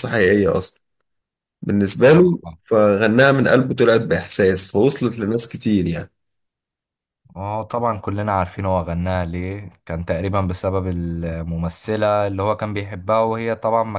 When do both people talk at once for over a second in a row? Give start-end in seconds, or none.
none